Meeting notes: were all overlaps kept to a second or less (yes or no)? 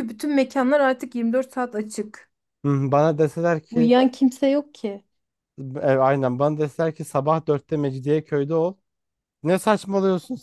yes